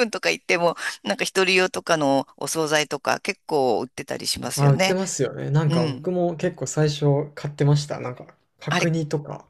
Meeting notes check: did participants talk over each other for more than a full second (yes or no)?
no